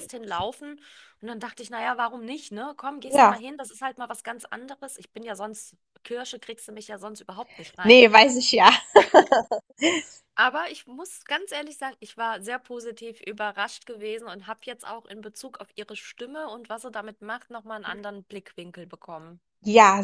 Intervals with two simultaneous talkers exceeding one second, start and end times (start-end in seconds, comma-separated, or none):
none